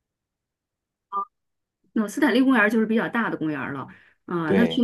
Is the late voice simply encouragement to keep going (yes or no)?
yes